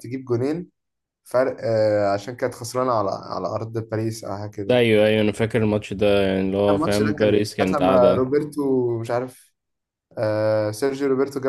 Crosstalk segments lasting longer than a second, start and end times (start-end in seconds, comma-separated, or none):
6.7-8.3